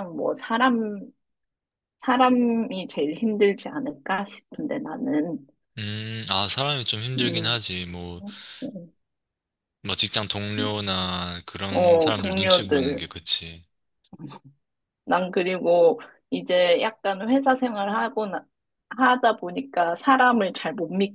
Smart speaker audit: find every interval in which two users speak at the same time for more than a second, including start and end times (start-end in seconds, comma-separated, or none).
11.7-13.1